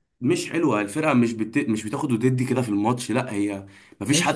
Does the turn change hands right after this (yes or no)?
yes